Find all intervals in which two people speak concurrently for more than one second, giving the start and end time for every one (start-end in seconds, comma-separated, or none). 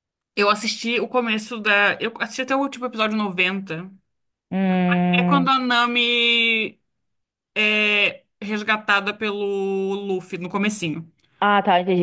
none